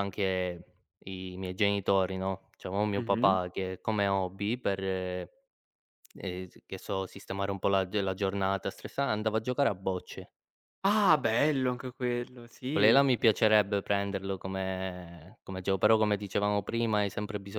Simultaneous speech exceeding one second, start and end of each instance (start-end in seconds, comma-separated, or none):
none